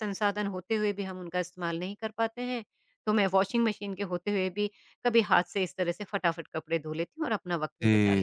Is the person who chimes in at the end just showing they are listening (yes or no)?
no